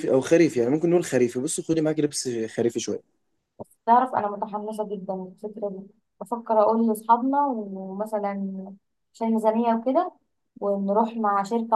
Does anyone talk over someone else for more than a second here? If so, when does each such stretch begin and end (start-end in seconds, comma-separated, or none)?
none